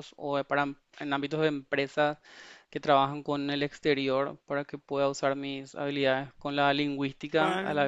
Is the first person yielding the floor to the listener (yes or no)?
no